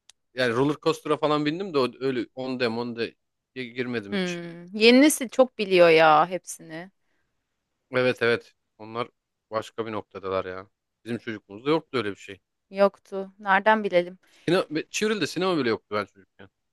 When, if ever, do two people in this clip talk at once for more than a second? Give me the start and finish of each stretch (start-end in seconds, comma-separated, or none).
none